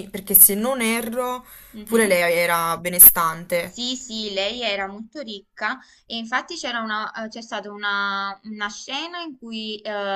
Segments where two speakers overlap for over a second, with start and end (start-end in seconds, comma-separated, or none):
none